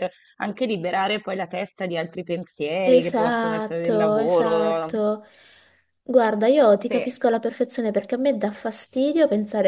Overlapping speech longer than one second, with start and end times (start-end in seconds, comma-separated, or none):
2.9-4.9